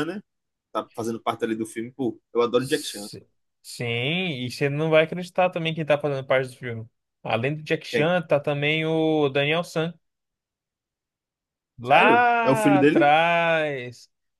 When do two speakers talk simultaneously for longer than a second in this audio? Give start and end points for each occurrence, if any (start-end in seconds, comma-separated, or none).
11.8-13.1